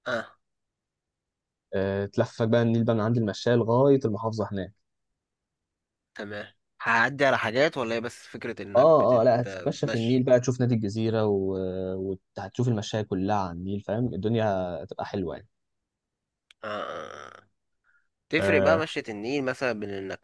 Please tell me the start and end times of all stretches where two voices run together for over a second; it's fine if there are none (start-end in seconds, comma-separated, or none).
8.8-10.2